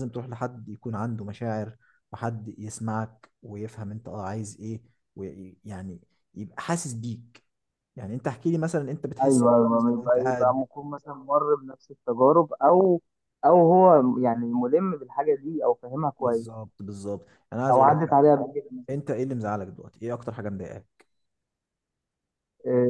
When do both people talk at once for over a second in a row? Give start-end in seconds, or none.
9.2-10.6